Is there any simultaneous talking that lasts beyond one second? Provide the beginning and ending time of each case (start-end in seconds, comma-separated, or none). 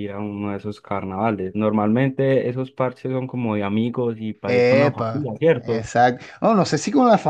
4.5-5.9